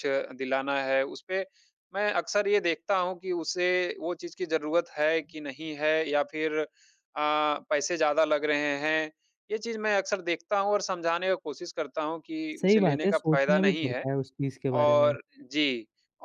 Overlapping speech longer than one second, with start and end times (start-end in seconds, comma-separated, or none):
12.6-14.1